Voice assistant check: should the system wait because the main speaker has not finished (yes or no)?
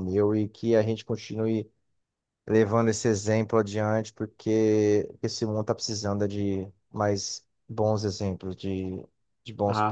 yes